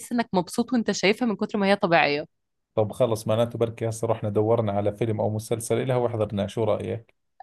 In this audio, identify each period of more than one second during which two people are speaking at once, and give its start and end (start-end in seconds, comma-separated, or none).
none